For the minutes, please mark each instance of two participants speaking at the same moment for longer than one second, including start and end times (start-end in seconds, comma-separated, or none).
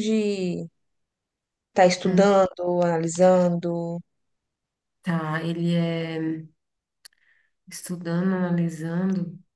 none